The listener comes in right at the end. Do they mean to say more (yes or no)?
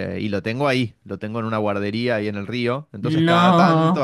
no